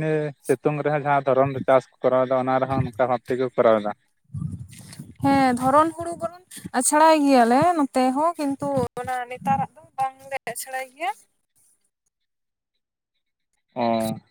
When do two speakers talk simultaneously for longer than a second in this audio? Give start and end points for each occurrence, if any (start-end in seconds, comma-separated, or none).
none